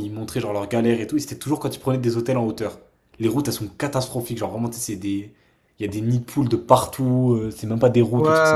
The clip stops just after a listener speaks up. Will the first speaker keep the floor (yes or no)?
no